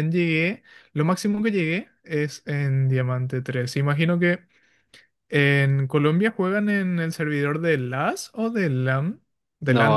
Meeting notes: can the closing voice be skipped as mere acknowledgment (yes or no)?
no